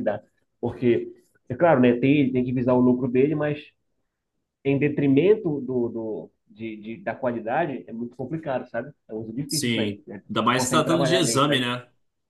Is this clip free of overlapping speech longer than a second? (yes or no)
no